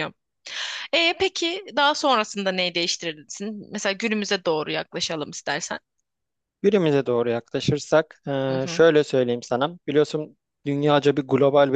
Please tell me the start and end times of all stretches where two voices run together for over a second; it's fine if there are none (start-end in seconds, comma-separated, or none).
none